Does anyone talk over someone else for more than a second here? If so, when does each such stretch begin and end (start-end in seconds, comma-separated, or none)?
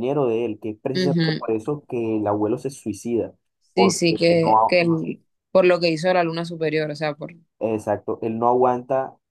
3.8-5.0